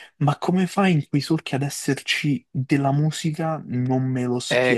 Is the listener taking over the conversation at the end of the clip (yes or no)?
yes